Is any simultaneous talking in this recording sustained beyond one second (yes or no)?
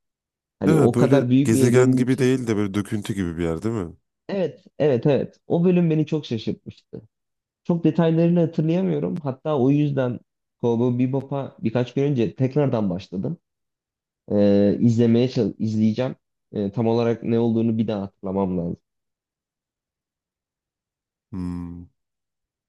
yes